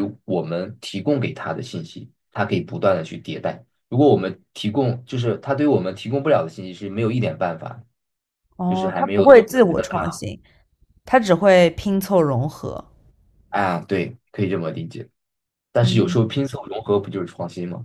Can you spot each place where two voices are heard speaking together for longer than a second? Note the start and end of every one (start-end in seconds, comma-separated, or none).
8.7-10.3